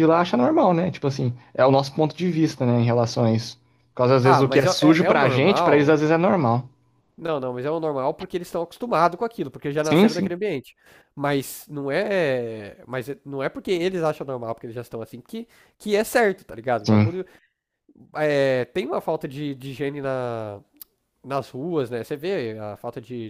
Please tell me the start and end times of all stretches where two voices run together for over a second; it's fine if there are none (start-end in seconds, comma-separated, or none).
4.2-6.0